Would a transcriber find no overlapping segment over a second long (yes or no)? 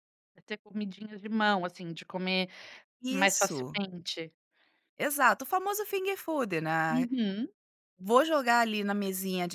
yes